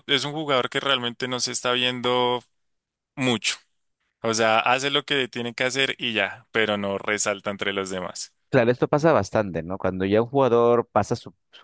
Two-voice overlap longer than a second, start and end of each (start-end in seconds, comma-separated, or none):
none